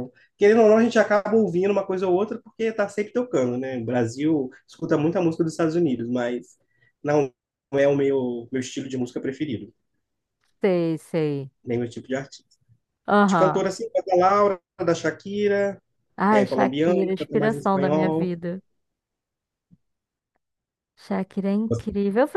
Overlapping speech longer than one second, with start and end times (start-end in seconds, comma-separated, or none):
16.3-18.4